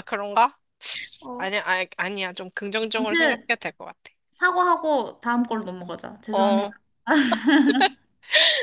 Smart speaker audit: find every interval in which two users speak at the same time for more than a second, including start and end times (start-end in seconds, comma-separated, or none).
none